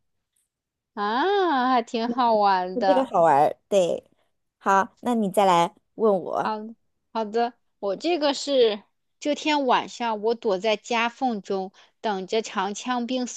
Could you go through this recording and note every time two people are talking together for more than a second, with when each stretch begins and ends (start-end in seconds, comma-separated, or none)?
none